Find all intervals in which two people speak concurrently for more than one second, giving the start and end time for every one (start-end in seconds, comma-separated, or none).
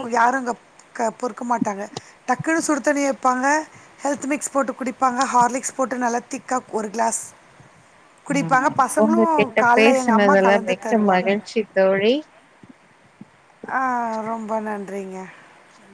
8.4-11.3